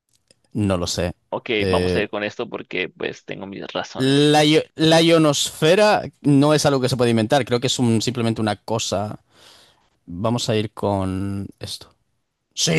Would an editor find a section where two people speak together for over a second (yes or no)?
no